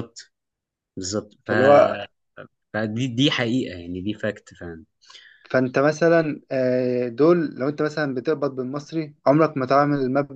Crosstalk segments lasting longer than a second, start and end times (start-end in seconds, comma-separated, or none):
none